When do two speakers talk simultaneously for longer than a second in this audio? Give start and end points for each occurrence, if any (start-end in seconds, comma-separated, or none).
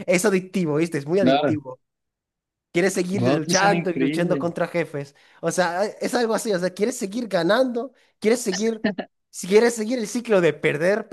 3.1-4.5